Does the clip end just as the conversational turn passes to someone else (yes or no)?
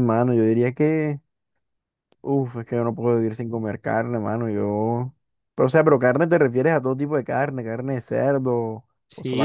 yes